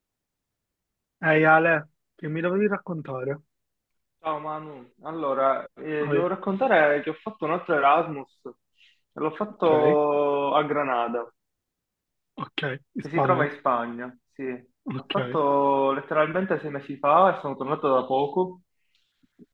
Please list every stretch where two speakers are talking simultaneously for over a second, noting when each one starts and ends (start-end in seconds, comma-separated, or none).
none